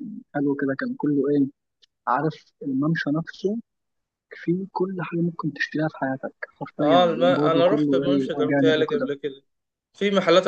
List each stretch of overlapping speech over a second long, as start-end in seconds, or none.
6.8-9.1